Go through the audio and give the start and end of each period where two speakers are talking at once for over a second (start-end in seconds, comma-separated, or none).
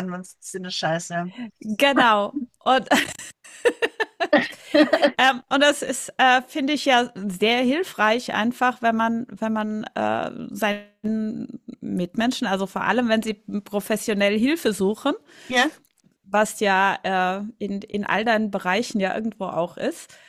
none